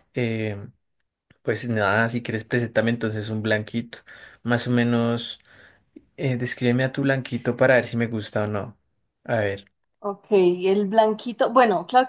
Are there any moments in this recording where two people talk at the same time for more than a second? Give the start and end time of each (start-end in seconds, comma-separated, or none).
none